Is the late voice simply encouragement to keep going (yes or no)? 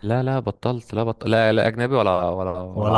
yes